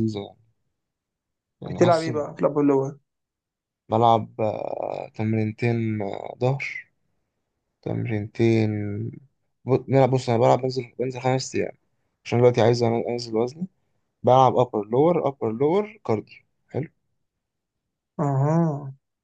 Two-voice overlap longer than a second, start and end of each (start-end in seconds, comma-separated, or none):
none